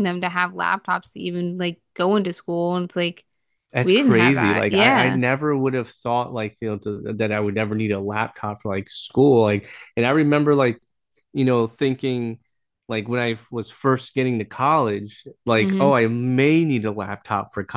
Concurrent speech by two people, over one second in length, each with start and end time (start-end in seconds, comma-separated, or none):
3.8-5.2